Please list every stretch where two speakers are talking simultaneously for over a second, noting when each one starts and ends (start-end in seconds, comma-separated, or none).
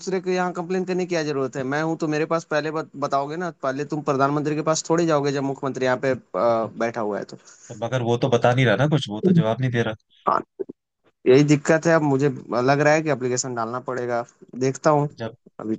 none